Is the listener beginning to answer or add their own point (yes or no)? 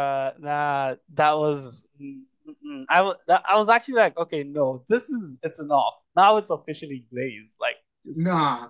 yes